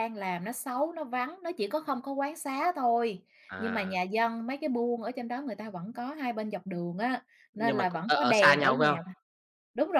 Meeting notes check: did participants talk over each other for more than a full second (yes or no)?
yes